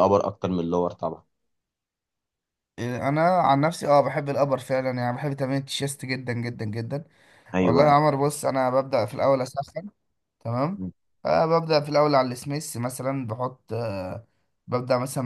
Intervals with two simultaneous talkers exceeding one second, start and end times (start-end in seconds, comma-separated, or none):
none